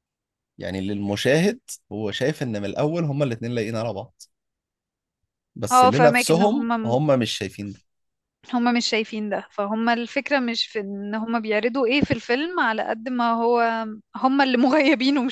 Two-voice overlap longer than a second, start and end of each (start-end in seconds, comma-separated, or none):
5.7-7.0